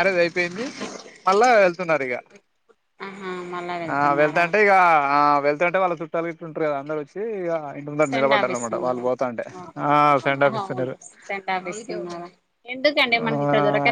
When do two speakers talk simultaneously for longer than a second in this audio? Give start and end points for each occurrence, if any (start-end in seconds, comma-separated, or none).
none